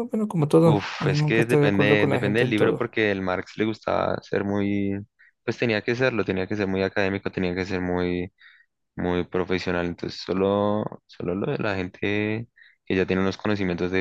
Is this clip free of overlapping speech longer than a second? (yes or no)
no